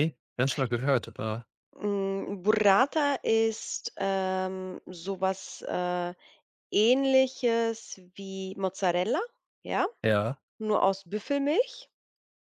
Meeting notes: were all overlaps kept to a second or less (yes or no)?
yes